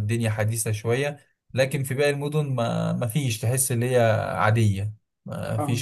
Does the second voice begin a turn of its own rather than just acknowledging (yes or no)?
no